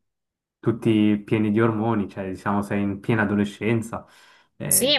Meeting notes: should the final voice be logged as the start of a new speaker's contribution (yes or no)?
yes